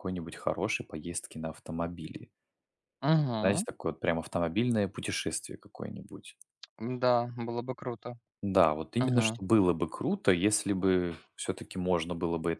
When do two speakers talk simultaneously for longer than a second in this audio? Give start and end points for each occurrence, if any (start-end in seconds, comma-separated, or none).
none